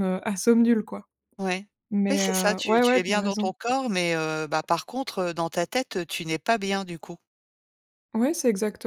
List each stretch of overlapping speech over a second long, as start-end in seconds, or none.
2.1-3.5